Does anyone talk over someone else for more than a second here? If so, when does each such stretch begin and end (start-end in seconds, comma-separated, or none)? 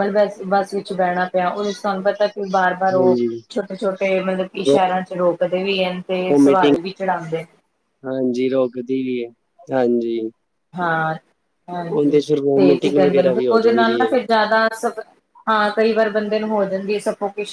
11.9-14.1